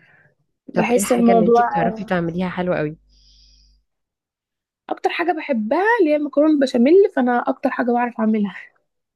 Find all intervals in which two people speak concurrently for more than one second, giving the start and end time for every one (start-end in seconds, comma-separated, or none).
0.7-2.1